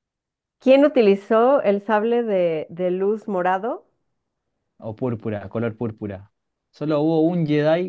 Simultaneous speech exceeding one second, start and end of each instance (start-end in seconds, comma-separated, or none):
none